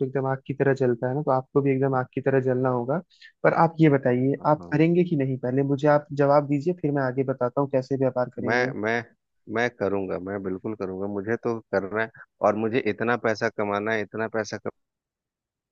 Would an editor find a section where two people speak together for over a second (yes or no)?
no